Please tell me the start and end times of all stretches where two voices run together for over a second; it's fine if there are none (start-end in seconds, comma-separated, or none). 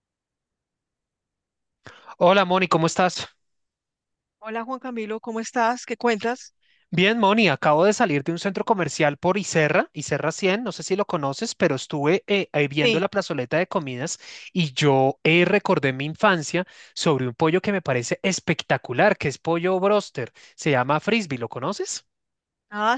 none